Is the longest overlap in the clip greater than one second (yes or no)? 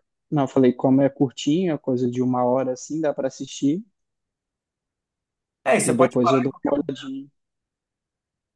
yes